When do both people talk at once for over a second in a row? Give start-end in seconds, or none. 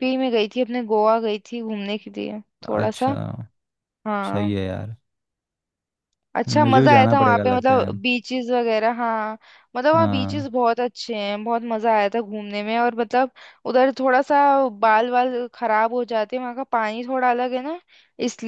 6.5-7.9